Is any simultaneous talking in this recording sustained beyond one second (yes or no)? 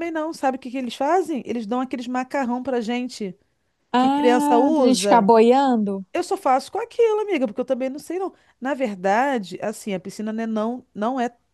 yes